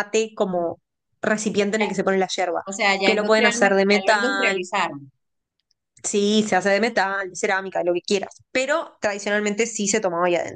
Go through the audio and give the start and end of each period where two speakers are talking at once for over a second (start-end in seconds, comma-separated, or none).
3.0-4.6